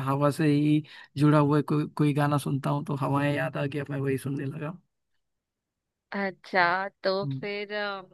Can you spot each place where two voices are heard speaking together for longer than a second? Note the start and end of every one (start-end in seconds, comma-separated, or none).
none